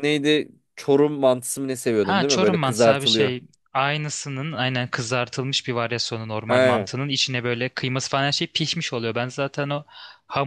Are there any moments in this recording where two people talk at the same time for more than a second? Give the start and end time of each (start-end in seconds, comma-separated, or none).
2.0-3.3